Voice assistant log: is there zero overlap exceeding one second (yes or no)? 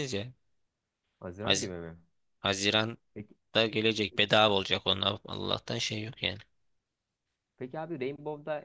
yes